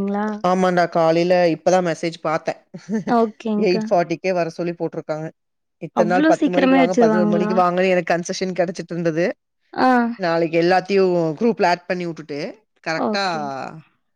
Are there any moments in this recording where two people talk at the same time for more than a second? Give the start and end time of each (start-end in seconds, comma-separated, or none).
6.0-7.5